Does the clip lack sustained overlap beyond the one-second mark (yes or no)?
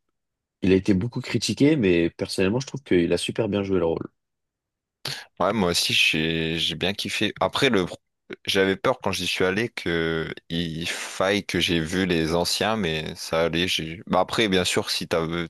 yes